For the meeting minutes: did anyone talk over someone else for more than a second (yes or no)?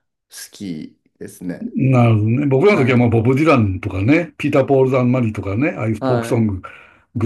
no